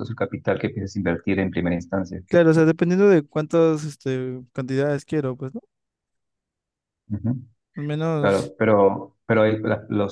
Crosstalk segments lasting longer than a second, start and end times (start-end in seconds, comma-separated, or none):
none